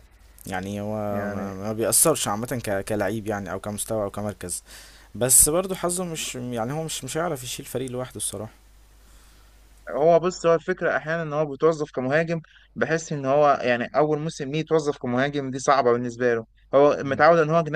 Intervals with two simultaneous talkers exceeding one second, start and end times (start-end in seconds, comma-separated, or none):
none